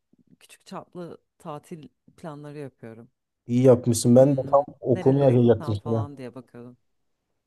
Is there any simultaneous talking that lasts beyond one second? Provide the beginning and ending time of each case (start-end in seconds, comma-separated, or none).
4.2-6.1